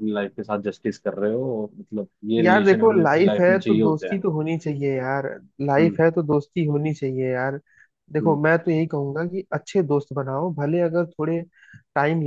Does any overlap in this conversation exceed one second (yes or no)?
yes